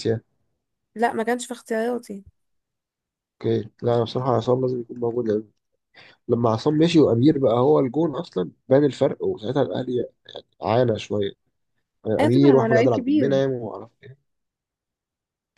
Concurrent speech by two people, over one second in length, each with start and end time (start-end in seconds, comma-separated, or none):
12.2-13.4